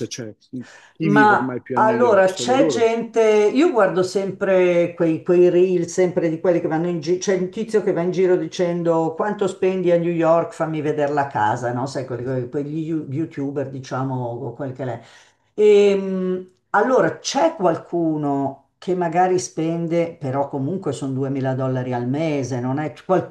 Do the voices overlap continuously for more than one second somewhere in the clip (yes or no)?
yes